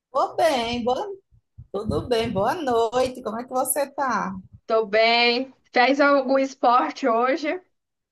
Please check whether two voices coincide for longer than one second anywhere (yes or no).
no